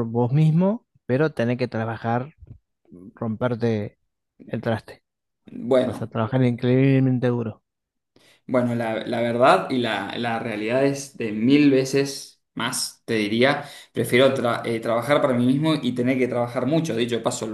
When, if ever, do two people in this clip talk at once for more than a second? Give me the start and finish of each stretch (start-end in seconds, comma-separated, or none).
none